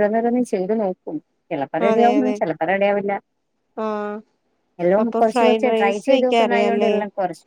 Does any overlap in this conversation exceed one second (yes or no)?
yes